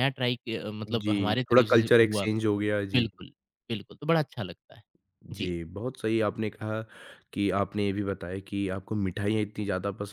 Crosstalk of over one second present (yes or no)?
yes